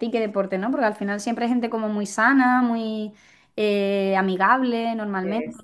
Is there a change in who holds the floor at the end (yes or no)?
yes